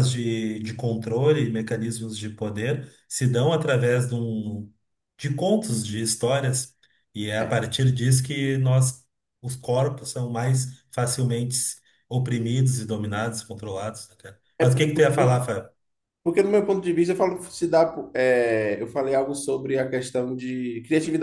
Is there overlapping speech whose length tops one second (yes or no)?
no